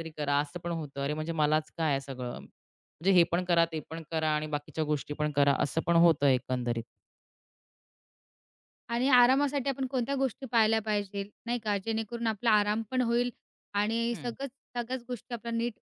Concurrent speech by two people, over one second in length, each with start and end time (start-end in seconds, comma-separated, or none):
none